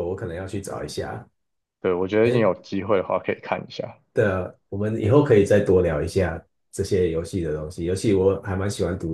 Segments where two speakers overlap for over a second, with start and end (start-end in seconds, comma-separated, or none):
none